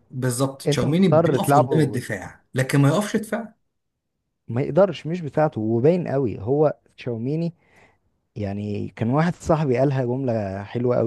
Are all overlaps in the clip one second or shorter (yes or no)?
no